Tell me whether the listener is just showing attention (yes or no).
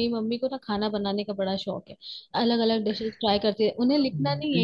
yes